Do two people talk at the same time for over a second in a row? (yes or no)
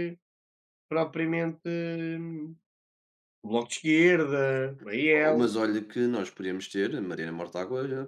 no